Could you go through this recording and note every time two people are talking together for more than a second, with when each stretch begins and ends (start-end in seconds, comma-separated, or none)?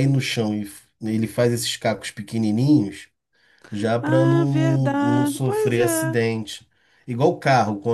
4.0-6.2